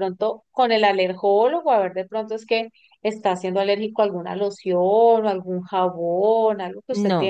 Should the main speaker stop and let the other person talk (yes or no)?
yes